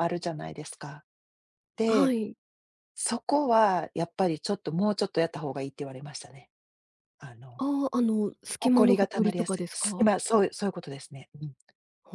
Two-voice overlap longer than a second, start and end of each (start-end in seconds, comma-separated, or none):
8.6-10.1